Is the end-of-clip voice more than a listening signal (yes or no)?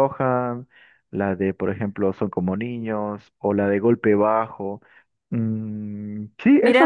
yes